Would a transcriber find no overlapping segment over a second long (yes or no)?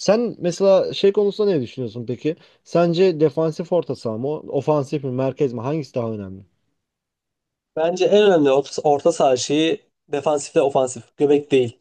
yes